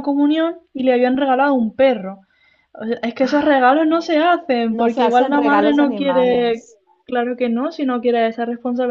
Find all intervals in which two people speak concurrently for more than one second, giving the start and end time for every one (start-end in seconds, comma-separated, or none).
4.7-6.7